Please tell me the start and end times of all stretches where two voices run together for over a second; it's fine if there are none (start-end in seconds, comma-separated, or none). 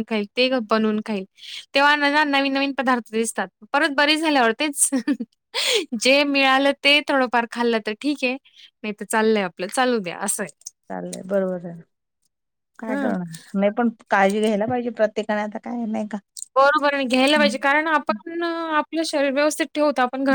none